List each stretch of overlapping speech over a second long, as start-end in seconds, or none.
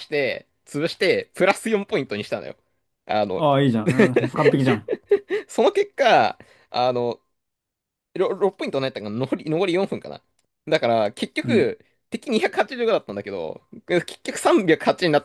none